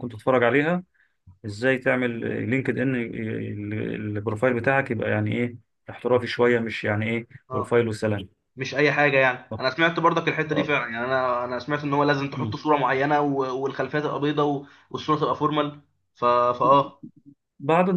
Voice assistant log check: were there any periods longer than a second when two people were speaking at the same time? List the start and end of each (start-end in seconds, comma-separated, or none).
none